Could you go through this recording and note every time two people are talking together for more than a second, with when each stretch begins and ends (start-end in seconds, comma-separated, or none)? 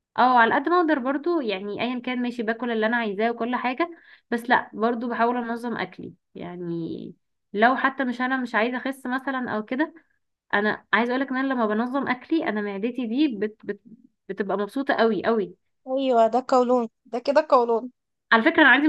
none